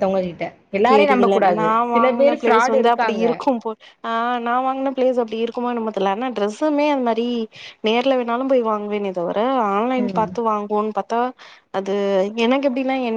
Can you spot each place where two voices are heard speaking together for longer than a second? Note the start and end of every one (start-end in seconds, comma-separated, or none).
0.9-3.2